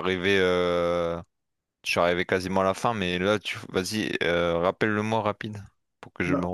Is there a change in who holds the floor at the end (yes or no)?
yes